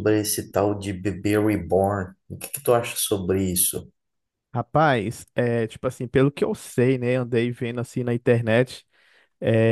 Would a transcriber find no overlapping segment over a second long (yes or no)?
yes